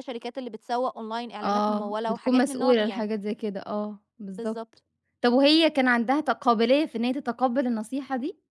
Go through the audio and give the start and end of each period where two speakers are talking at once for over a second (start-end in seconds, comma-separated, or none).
1.4-3.1